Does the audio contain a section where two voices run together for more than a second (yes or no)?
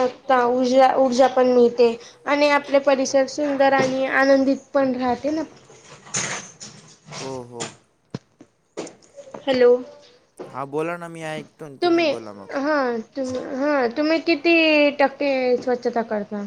no